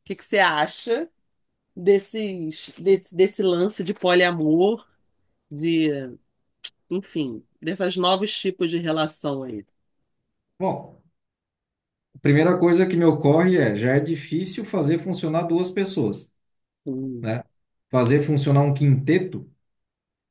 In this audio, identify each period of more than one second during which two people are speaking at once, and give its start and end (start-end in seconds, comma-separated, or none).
none